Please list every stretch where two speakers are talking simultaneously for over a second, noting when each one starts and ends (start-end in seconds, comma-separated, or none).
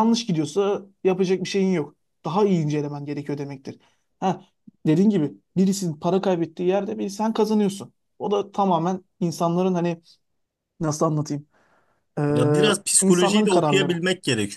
12.3-14.0